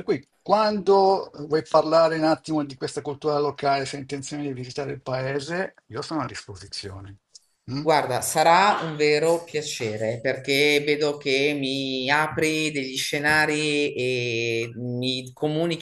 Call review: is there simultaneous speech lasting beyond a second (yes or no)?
no